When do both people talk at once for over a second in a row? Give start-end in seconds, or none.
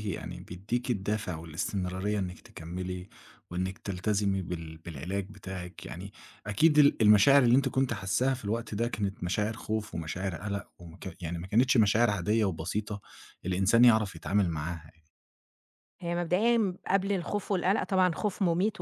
none